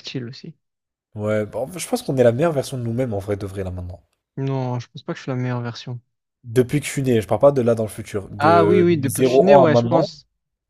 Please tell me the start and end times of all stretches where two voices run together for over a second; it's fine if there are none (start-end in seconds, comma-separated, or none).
8.4-10.1